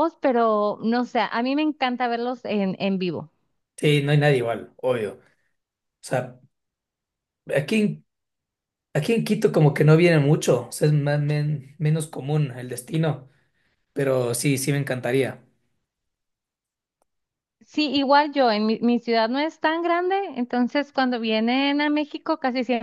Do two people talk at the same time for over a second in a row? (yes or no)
no